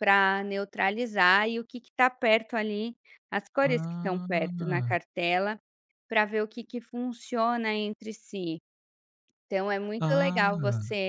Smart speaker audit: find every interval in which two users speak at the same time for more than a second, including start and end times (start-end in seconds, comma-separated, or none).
3.6-5.0